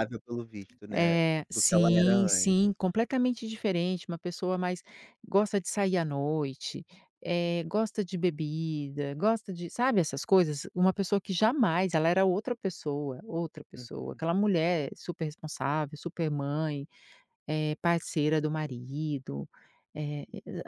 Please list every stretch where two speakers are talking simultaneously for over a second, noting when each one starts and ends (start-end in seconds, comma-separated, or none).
0.9-2.5